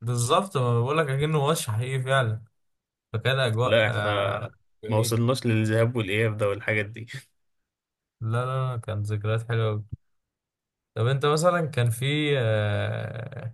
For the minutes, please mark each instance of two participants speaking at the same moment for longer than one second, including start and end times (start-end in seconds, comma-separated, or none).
none